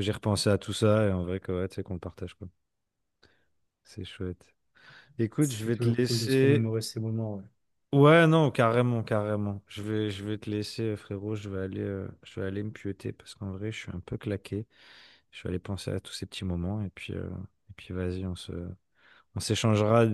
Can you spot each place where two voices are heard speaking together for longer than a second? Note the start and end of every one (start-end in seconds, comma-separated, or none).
5.4-6.7